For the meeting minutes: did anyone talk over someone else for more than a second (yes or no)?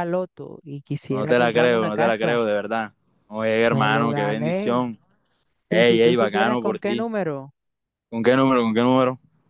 yes